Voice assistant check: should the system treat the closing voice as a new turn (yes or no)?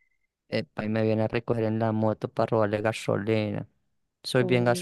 yes